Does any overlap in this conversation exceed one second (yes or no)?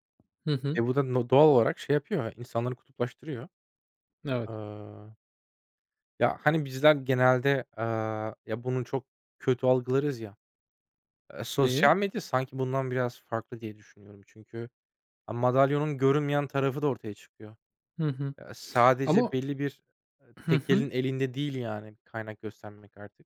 no